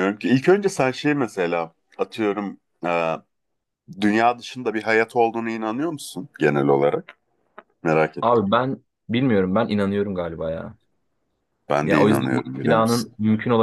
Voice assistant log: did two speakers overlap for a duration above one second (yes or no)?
yes